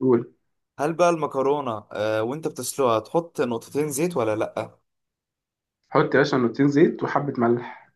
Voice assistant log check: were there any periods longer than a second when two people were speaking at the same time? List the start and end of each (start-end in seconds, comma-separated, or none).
none